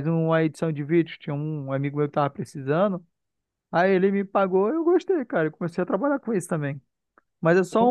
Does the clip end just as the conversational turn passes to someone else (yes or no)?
no